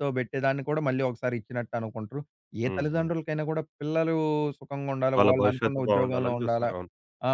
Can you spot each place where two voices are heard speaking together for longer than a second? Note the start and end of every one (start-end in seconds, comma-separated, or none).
5.2-6.7